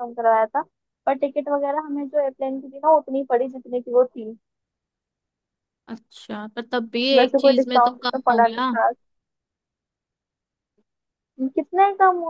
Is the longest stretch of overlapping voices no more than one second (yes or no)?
no